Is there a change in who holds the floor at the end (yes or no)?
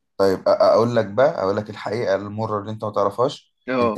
no